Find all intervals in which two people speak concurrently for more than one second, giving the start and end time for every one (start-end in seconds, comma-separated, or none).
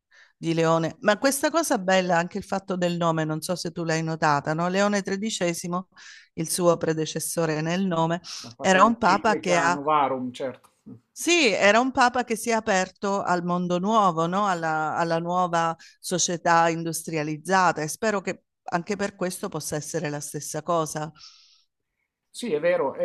8.6-9.8